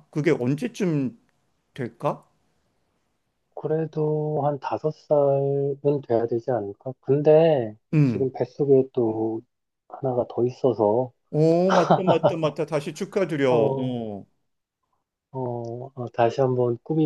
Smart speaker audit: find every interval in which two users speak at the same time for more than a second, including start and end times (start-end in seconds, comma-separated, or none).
none